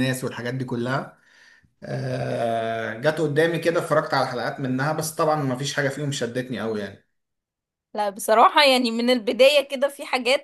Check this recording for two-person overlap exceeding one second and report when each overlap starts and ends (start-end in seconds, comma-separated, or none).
none